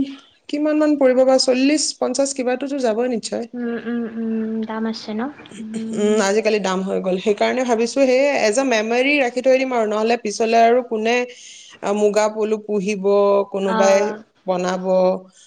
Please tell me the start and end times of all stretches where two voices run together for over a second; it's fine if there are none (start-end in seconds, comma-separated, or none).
none